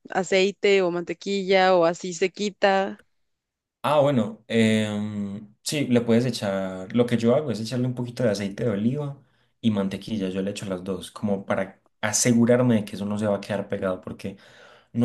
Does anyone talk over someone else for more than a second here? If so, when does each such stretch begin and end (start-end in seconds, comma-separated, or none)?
none